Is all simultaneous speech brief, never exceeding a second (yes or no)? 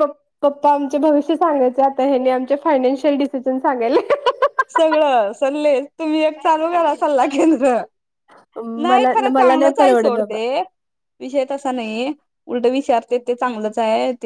no